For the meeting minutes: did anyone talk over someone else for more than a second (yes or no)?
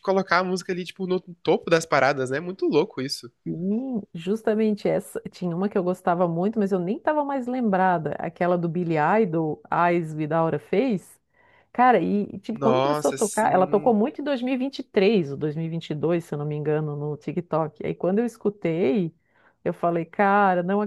yes